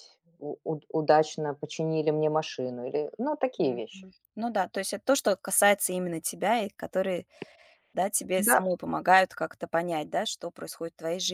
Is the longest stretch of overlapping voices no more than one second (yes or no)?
yes